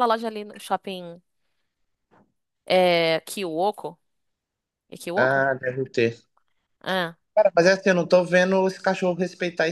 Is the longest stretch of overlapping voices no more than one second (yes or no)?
yes